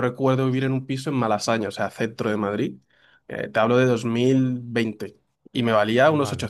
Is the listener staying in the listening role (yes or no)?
yes